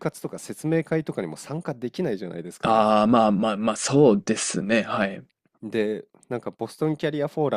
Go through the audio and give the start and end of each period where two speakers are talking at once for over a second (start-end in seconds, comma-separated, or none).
none